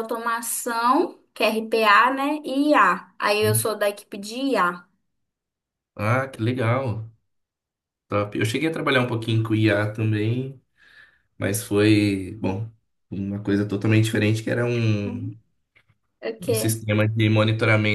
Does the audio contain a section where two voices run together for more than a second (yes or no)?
no